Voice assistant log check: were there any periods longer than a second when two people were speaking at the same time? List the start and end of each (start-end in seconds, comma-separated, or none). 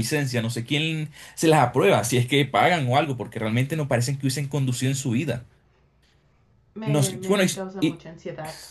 6.8-8.0